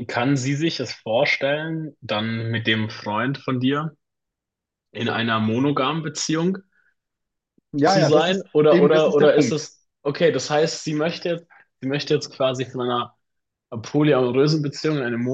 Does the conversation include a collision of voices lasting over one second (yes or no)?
yes